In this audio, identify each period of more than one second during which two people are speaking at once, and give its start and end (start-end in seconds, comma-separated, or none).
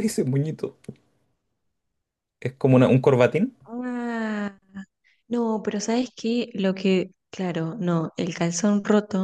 none